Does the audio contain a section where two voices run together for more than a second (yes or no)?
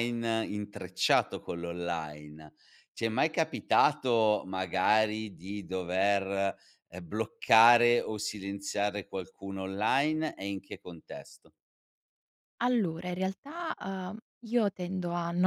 no